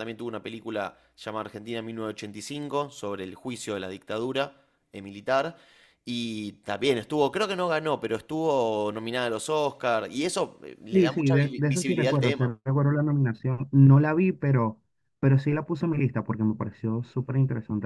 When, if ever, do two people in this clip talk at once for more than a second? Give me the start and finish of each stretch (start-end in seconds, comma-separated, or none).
10.9-12.5